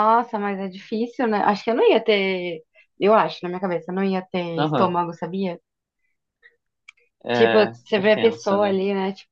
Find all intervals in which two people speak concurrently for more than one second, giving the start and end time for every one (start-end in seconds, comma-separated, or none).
7.3-8.8